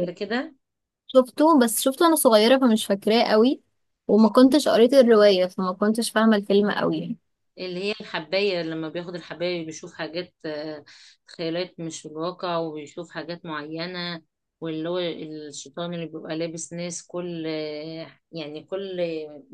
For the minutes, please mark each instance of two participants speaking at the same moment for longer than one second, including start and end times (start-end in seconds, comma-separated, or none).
none